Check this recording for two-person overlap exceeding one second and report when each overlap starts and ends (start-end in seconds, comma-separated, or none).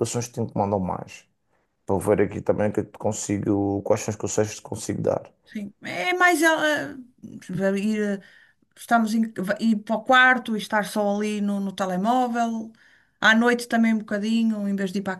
none